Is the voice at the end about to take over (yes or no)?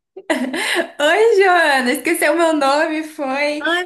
yes